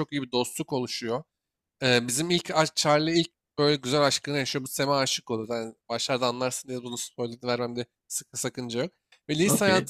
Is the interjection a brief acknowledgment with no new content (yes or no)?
yes